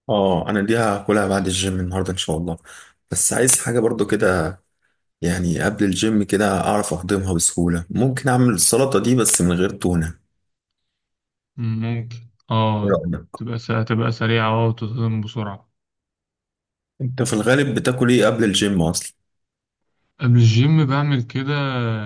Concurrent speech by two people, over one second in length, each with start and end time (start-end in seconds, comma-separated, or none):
none